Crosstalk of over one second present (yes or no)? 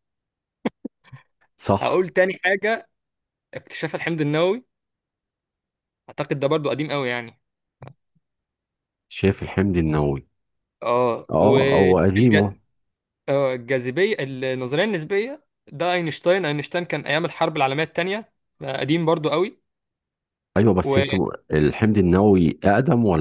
yes